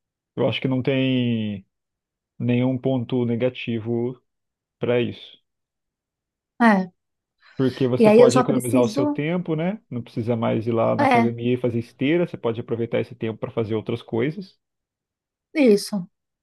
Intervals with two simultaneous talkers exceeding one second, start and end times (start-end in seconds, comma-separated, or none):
8.0-9.2